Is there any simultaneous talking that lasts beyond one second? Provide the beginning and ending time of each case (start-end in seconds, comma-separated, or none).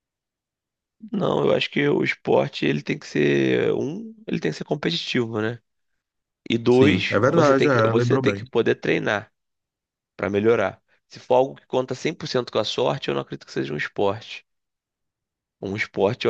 6.7-8.4